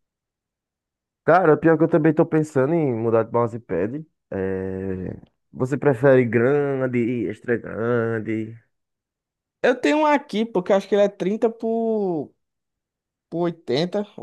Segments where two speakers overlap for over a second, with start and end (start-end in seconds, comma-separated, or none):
none